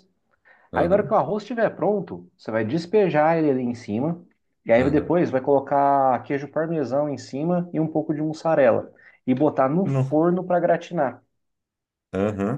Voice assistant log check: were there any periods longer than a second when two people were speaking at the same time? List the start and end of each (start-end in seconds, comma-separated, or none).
none